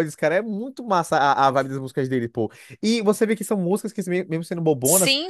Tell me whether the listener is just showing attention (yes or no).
yes